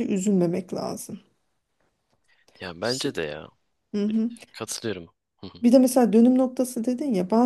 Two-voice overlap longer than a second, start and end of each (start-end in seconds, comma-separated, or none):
none